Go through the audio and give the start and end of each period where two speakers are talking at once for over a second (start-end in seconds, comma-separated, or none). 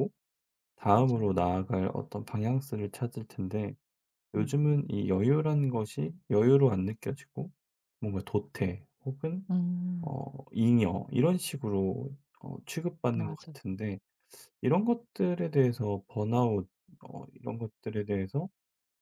none